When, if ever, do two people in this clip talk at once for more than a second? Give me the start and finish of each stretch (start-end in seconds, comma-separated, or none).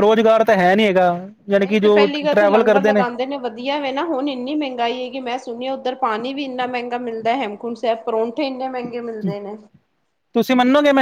1.6-3.0